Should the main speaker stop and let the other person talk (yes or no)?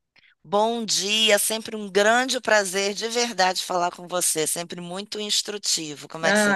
yes